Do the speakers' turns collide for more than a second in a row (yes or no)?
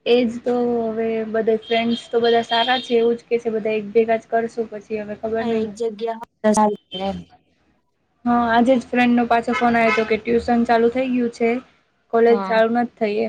no